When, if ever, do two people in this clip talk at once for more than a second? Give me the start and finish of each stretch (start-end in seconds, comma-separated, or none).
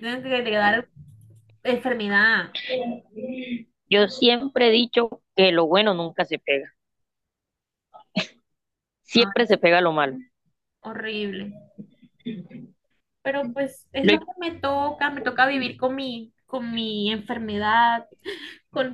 none